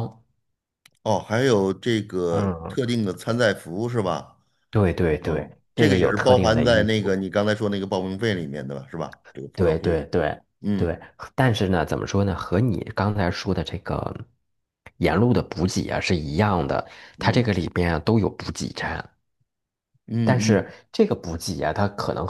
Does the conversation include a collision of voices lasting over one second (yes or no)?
yes